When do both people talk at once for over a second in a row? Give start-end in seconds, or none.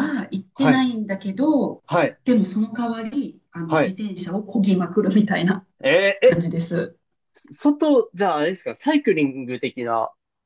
none